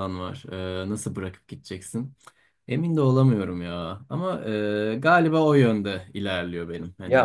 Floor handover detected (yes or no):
yes